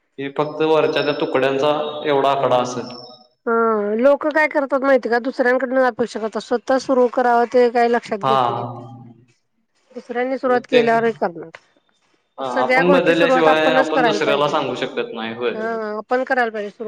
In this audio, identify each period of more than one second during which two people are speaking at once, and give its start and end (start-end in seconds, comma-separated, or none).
12.5-14.6